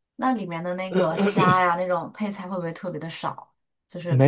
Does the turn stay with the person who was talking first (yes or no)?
no